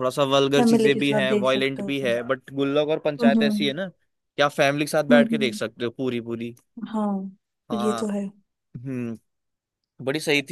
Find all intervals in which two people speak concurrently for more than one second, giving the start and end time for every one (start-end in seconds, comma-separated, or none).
0.6-2.1